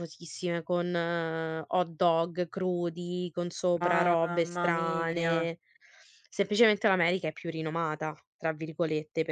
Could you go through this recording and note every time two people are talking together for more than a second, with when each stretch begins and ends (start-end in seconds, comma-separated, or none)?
3.8-5.3